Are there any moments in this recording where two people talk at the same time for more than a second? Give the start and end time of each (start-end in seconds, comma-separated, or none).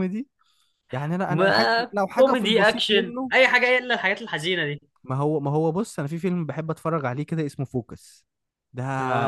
1.3-3.3